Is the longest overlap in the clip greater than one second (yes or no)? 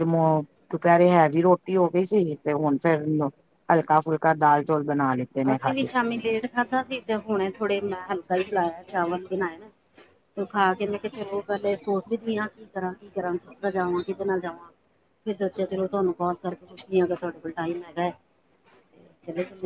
no